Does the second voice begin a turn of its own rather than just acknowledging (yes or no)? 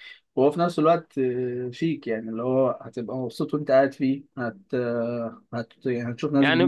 yes